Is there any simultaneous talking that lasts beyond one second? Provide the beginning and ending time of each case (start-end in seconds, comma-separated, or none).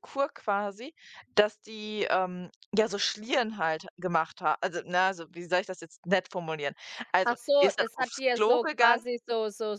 7.2-9.0